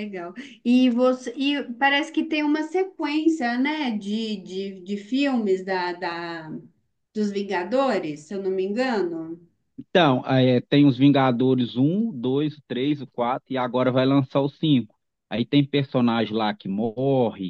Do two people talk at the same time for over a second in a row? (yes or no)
no